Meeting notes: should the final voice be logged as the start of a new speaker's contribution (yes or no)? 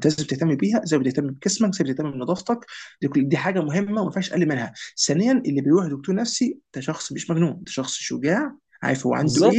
no